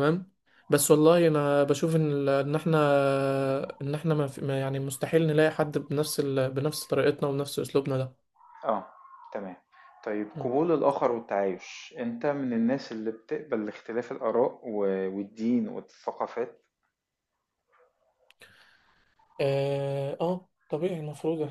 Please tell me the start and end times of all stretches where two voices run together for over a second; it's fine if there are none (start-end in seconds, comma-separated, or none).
none